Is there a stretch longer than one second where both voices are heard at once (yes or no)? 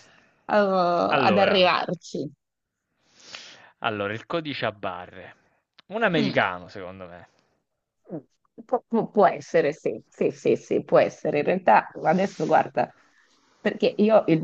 no